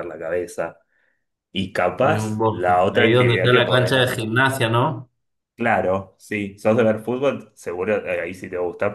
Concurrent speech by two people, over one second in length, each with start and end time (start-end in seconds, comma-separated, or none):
2.0-4.3